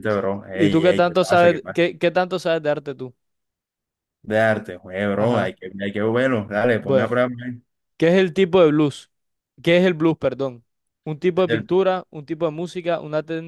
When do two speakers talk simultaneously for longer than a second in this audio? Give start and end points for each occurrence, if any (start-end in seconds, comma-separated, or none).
0.5-1.8